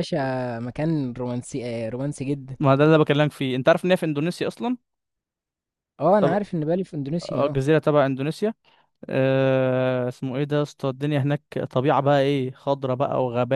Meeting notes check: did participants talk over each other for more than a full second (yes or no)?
no